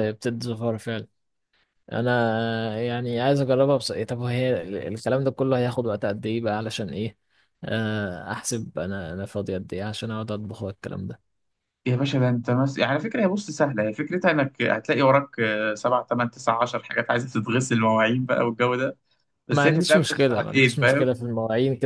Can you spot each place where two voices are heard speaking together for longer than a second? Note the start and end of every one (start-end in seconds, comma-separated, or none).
19.5-21.1